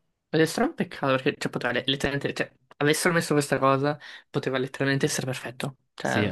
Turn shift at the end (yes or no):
no